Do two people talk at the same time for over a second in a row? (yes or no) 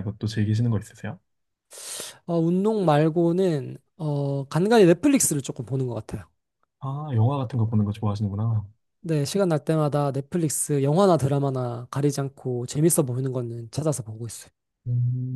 no